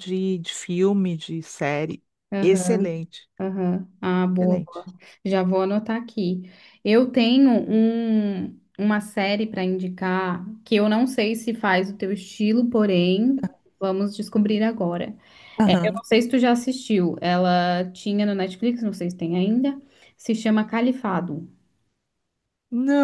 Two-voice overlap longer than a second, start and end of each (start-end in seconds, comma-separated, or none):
none